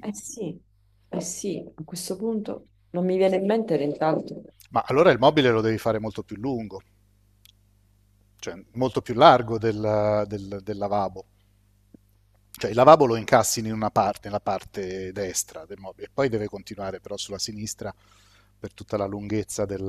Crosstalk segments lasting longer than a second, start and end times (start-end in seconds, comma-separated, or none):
none